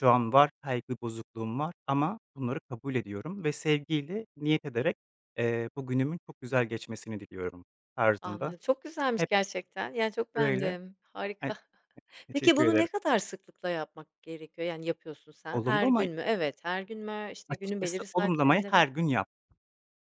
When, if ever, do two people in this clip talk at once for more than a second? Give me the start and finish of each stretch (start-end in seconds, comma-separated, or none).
17.5-18.8